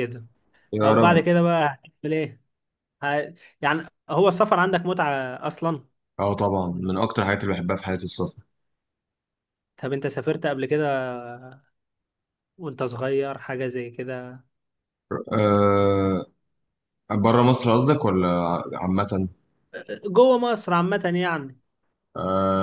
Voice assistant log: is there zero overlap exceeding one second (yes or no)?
yes